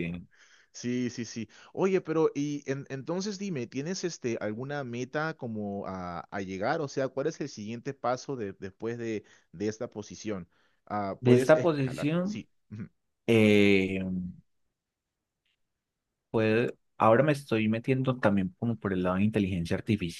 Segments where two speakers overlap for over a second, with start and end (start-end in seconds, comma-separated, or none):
11.2-12.4